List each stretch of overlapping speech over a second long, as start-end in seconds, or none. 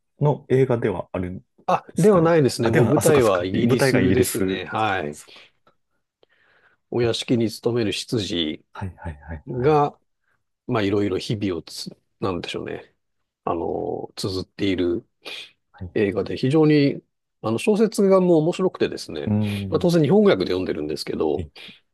1.9-5.2